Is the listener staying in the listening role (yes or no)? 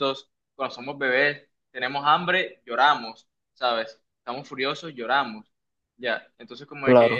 yes